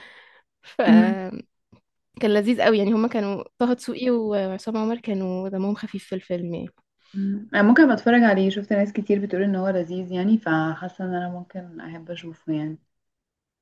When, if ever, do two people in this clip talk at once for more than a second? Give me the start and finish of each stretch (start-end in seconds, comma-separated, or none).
none